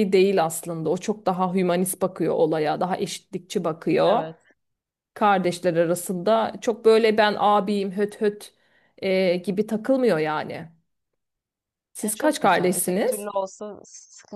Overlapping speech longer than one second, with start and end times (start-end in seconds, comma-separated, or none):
12.0-13.3